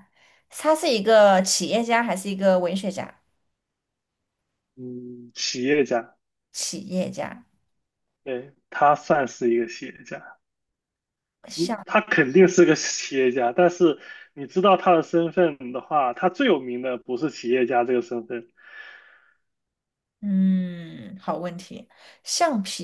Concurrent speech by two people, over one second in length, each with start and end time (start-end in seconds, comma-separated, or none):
none